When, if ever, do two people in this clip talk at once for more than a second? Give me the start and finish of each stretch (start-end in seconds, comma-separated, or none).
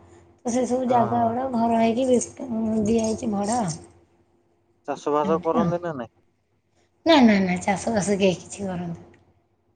none